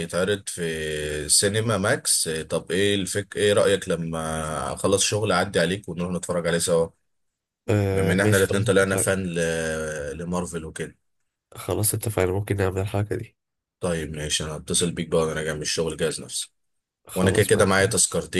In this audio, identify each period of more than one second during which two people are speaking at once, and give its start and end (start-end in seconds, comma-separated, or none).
7.9-9.1